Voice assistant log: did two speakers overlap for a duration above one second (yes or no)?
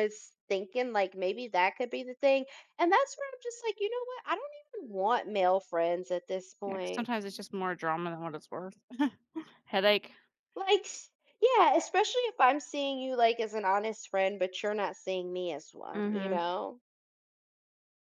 no